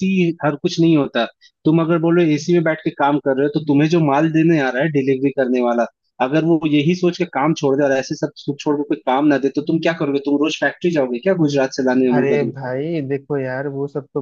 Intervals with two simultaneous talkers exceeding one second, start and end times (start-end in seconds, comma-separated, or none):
none